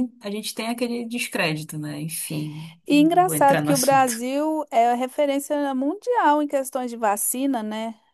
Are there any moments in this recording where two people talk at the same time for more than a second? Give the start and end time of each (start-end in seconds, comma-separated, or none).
2.9-4.2